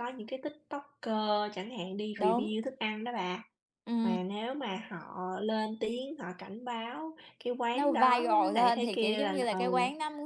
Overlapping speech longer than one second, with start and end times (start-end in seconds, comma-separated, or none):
7.7-9.7